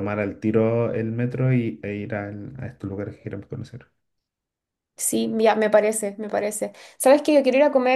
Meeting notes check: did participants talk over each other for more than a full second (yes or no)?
no